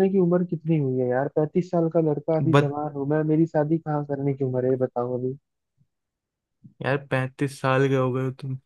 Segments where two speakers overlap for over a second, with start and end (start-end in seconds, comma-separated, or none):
none